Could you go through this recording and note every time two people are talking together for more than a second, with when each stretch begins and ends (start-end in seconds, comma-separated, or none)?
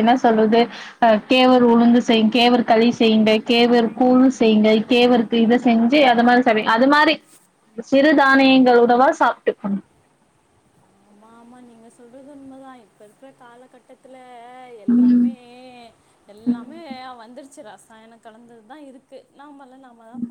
none